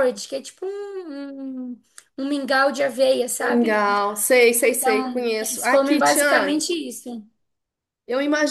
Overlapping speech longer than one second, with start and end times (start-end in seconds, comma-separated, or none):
4.7-6.6